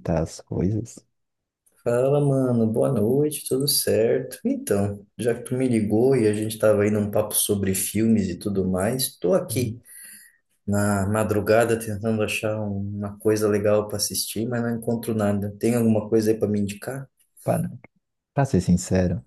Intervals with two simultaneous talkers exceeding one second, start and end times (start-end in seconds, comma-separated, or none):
none